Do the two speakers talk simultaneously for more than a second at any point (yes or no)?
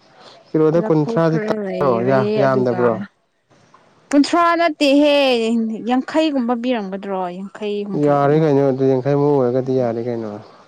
yes